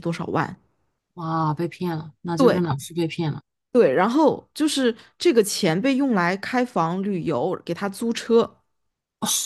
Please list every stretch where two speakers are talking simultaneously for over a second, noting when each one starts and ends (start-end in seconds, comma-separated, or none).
none